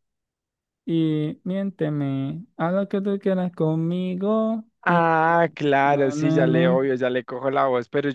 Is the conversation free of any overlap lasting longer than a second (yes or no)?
no